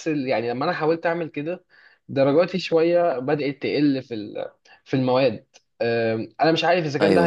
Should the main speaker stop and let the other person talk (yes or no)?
no